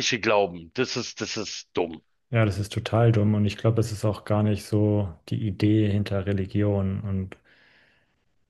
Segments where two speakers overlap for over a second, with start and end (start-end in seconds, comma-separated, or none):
none